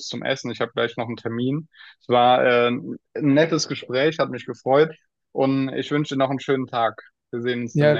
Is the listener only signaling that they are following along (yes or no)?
no